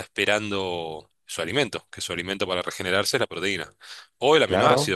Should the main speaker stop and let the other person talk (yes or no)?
no